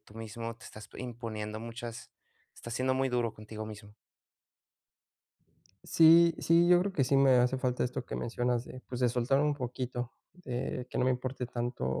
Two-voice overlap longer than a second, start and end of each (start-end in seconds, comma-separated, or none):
none